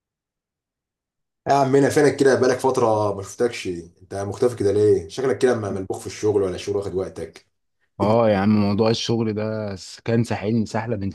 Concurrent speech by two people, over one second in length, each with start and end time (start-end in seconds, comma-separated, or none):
none